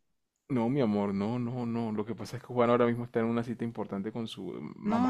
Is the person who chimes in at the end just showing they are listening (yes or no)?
no